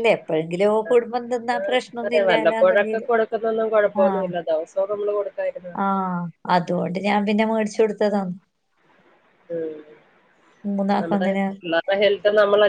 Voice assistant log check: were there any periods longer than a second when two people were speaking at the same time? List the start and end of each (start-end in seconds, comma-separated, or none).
none